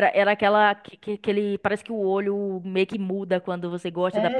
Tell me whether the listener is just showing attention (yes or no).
no